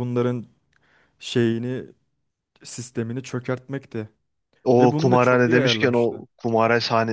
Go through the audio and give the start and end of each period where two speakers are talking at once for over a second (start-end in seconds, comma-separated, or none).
4.8-6.2